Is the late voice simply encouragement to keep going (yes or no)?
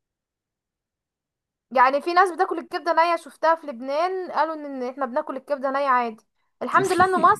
yes